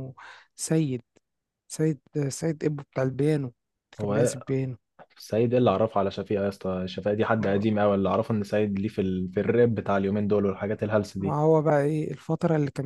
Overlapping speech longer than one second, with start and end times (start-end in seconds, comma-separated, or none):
none